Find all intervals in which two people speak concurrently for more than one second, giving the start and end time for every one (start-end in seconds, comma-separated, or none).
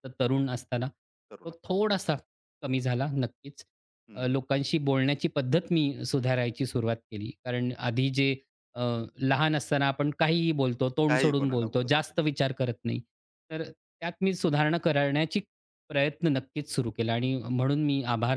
11.1-12.4